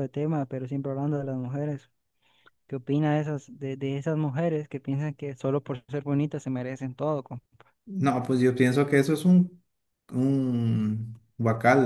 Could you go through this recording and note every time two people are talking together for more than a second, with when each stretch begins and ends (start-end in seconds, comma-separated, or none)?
none